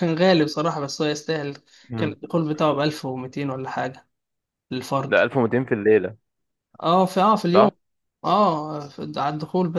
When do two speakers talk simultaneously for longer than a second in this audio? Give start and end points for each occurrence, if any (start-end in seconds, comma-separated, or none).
none